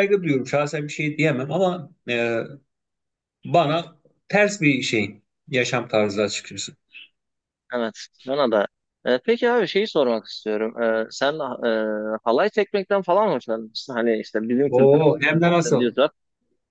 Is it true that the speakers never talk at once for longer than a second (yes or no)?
no